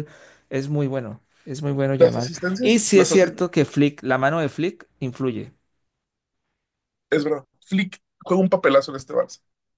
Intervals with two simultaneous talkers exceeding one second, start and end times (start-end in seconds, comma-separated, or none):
1.9-3.5